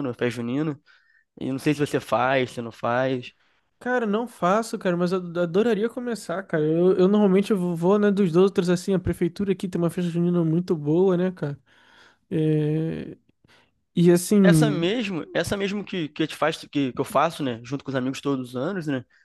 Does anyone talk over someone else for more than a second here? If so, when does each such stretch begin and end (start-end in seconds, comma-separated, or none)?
none